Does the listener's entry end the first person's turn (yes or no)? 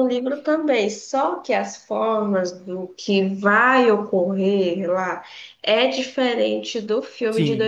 yes